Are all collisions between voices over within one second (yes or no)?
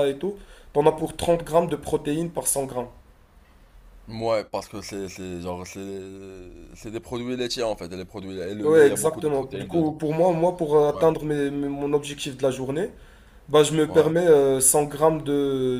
no